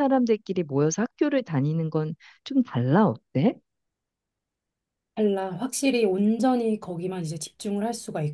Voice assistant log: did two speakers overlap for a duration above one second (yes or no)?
no